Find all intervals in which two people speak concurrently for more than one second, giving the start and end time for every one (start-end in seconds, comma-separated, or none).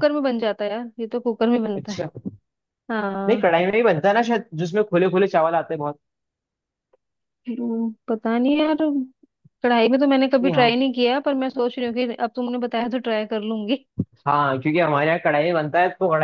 none